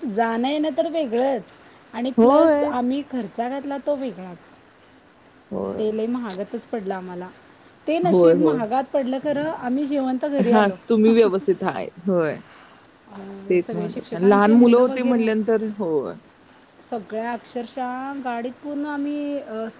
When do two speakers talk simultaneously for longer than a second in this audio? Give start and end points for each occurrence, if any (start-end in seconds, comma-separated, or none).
13.5-15.3